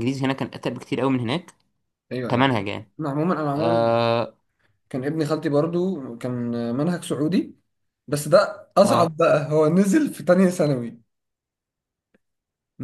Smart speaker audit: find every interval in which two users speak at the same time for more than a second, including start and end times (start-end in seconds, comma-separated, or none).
none